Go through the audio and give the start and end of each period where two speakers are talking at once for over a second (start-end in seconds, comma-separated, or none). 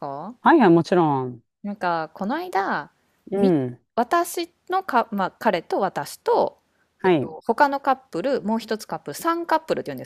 none